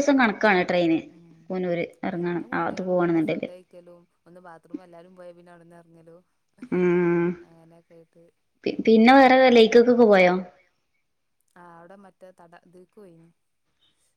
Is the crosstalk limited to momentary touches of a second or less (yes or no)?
no